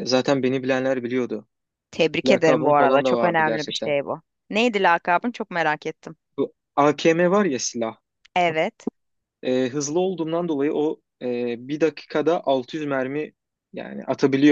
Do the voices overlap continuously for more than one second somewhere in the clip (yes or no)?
yes